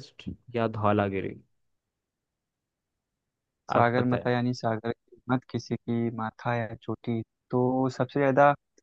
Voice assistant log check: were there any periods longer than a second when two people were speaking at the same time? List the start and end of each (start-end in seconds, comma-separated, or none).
none